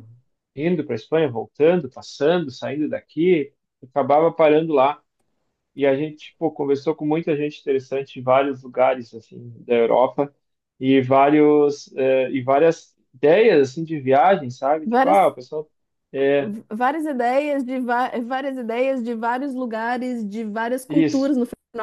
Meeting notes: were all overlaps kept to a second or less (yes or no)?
yes